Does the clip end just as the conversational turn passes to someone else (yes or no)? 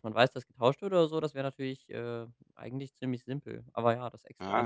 yes